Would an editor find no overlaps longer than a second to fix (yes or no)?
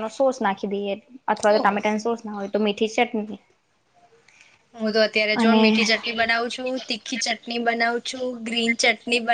yes